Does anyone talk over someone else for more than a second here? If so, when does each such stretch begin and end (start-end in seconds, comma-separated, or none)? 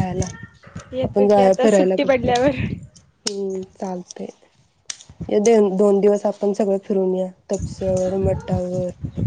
1.1-2.4